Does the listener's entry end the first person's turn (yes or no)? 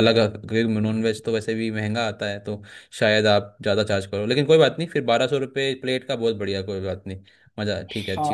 yes